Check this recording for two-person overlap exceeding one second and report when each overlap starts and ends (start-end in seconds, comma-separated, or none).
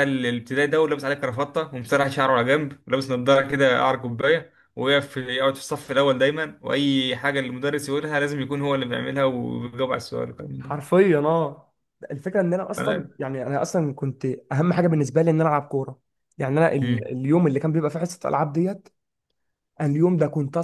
none